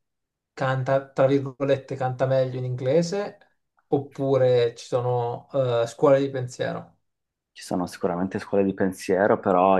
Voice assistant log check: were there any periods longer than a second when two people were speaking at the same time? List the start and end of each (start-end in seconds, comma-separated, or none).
none